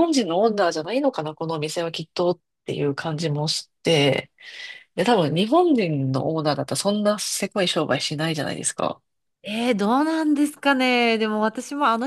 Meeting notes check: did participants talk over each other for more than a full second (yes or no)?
no